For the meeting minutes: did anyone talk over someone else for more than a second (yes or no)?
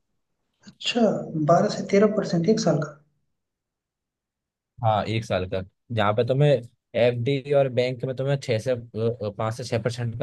no